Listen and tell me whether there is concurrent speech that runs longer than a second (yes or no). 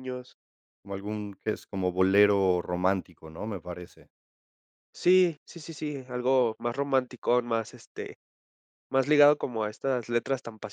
no